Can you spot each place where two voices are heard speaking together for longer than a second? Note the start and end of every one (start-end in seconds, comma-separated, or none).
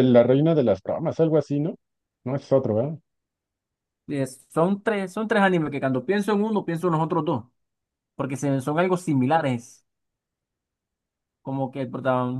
none